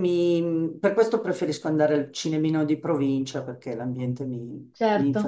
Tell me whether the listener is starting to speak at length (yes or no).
no